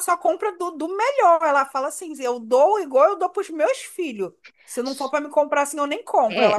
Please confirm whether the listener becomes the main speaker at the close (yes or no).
yes